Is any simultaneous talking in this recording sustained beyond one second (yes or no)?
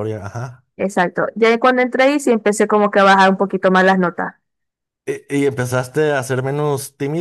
no